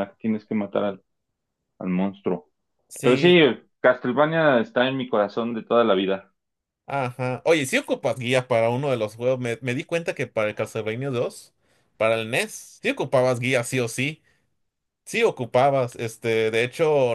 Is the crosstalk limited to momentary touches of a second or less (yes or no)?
yes